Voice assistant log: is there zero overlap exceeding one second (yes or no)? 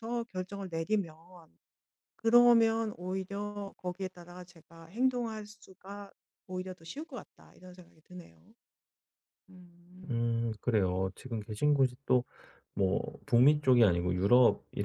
yes